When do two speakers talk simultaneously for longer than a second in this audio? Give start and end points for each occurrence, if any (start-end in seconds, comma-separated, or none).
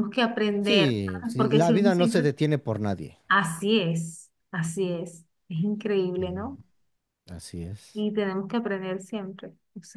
0.6-2.3